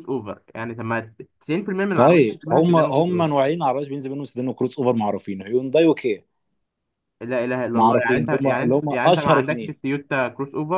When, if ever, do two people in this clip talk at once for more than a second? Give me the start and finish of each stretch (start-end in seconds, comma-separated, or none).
1.9-3.3, 7.7-9.8